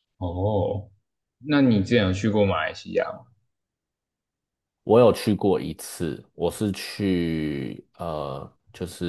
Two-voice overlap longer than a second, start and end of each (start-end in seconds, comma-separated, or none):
none